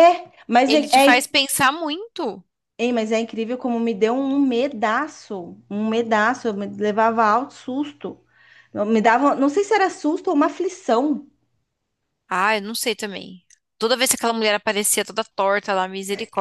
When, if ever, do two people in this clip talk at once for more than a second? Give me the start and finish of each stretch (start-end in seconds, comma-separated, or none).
none